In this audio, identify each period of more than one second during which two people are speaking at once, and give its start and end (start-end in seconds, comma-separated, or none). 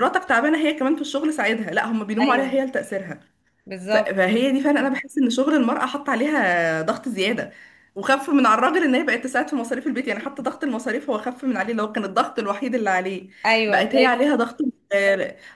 none